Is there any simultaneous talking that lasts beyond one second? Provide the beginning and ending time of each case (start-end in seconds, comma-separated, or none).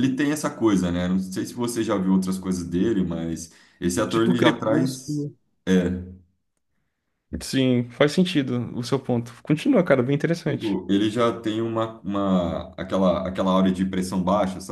4.1-5.3